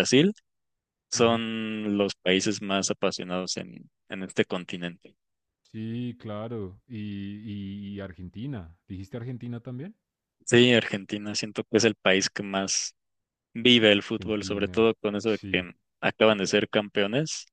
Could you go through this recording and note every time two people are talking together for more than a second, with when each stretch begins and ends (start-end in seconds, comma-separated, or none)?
14.2-15.7